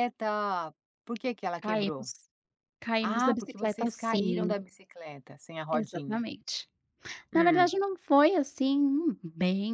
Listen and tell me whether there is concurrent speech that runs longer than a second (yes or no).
yes